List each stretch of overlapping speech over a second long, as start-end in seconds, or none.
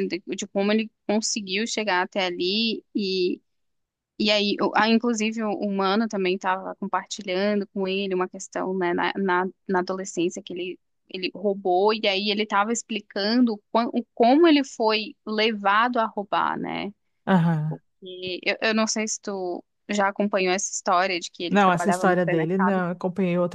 21.5-22.8